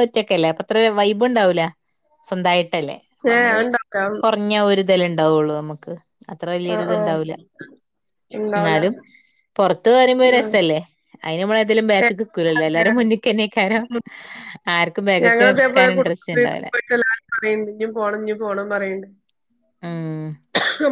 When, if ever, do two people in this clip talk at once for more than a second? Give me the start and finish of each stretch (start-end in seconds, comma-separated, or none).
15.2-16.7